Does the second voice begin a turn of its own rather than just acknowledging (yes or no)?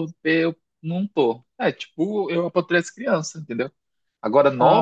no